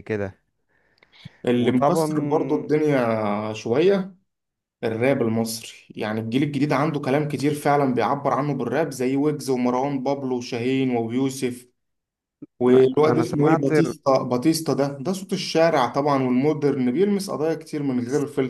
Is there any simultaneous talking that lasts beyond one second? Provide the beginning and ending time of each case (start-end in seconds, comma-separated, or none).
12.7-13.9